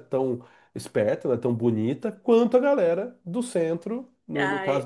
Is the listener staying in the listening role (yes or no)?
no